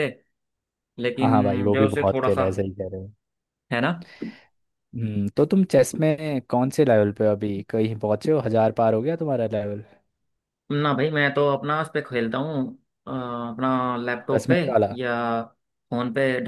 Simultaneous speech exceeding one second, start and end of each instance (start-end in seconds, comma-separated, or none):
1.2-2.5